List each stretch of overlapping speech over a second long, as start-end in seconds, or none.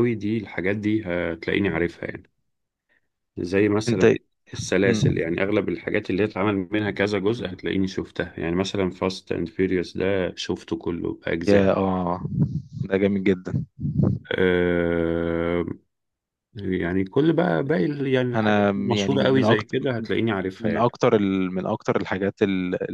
18.3-19.8